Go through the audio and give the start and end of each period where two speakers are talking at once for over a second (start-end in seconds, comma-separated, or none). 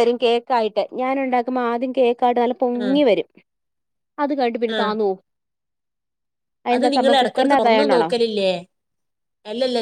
6.8-8.1